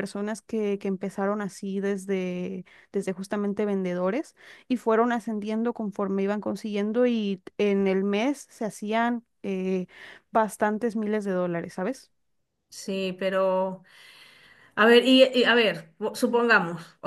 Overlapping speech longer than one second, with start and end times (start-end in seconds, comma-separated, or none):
none